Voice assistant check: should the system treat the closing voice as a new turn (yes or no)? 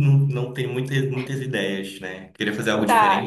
yes